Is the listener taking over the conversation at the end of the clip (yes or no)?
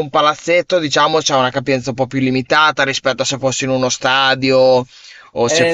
yes